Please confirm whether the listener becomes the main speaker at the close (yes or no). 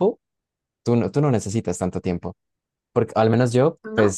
no